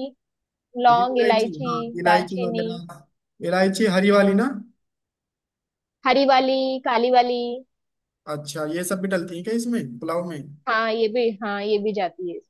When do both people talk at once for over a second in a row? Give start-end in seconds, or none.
0.9-2.7